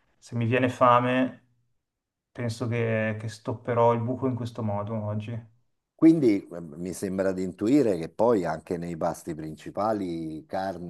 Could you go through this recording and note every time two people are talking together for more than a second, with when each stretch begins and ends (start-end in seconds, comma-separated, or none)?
none